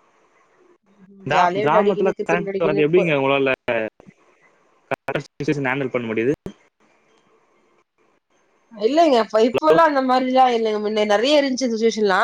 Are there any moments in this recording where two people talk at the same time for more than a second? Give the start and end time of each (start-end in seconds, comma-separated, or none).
1.3-3.0